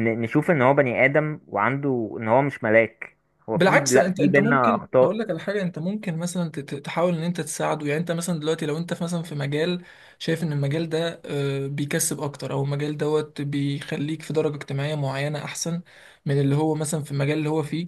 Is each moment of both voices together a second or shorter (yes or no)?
no